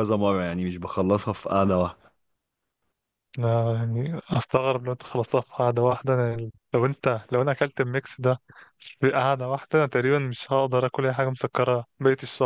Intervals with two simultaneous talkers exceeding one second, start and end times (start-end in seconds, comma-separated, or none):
none